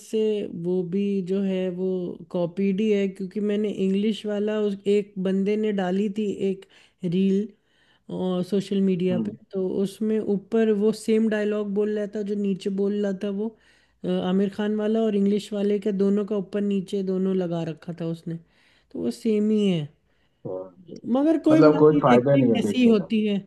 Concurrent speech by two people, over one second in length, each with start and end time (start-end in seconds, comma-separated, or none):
21.5-22.9